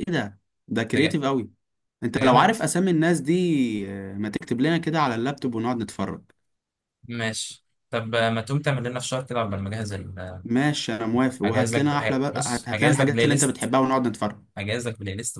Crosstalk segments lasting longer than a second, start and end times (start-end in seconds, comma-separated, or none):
11.4-13.7